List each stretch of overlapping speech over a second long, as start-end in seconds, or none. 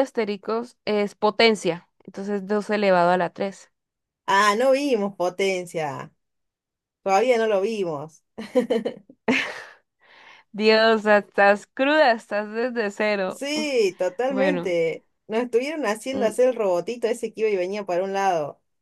none